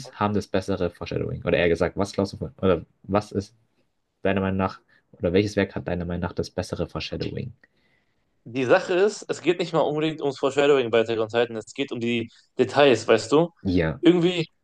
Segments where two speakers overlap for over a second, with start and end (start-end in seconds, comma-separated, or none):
none